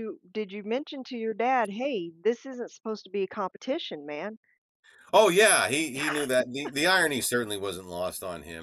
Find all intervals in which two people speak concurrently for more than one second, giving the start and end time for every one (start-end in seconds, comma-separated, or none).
none